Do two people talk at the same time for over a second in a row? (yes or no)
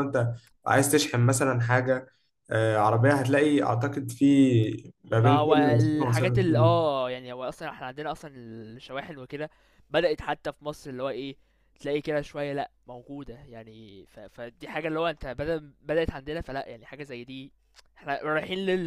yes